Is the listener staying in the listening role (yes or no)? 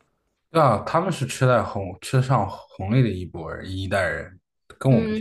no